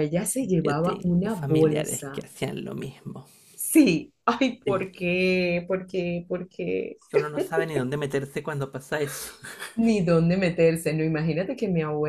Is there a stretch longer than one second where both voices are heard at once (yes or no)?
yes